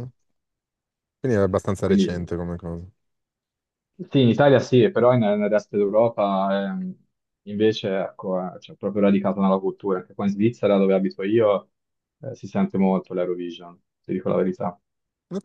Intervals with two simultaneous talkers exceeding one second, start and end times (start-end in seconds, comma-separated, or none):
none